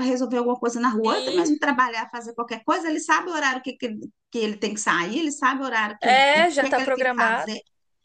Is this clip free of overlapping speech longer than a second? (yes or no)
no